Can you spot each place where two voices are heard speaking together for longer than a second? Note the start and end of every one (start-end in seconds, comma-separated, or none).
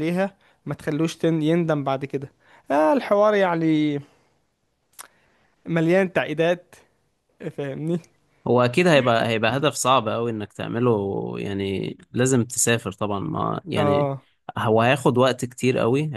none